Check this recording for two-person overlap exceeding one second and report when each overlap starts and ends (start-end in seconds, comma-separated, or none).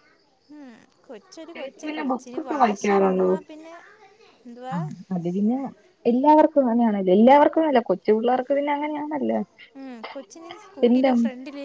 1.6-3.3